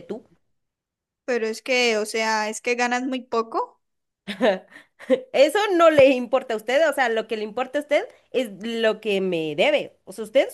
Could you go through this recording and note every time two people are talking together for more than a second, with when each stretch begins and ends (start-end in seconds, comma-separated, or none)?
none